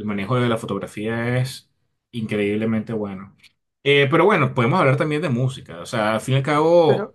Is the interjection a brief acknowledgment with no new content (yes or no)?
no